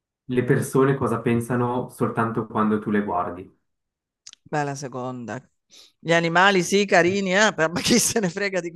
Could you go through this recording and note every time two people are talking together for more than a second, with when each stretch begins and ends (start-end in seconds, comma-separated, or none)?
none